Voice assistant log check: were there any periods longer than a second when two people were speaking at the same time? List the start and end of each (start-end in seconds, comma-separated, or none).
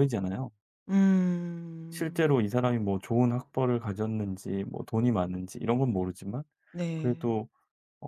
none